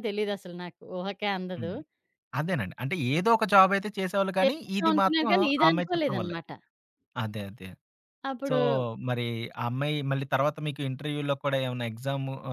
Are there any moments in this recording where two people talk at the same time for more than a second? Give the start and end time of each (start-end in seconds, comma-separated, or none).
4.4-6.4